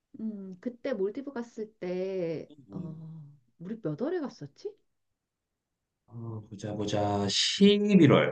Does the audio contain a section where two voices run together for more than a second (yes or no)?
no